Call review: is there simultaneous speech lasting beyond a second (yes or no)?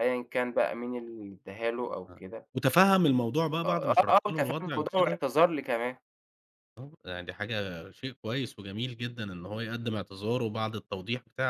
yes